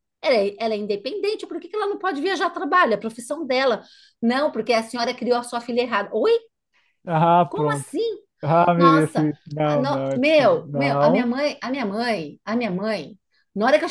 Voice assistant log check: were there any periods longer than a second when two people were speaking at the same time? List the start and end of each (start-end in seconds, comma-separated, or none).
8.8-11.3